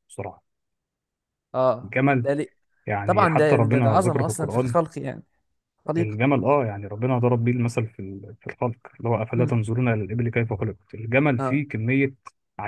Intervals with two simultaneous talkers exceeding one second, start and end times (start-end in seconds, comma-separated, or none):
3.0-4.8